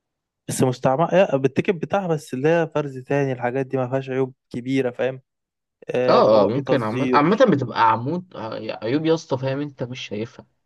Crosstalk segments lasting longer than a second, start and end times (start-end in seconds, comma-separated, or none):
6.1-7.5